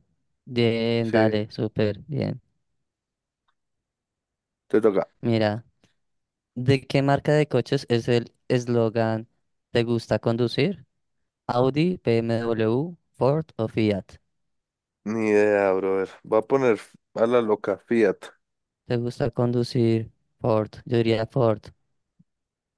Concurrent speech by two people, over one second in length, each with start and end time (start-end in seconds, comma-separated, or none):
none